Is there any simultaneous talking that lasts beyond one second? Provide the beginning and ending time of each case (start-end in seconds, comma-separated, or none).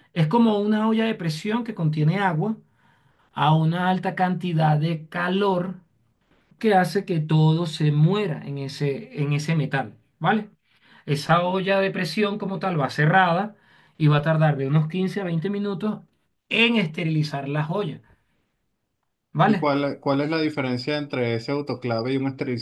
none